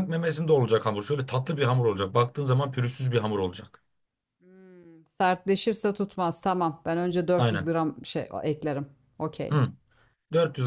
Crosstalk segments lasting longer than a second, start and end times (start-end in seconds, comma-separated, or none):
none